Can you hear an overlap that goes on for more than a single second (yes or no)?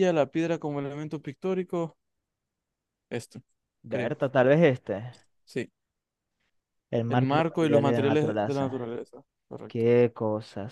yes